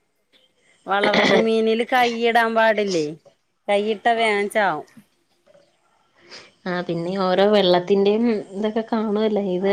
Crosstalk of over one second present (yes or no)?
no